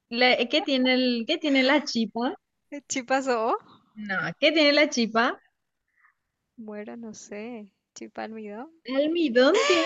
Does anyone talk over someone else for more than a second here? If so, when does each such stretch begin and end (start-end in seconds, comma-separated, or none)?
none